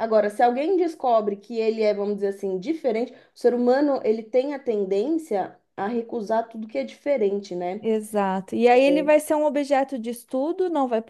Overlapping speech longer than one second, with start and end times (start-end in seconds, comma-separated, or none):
none